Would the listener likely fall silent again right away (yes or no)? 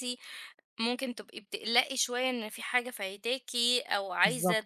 yes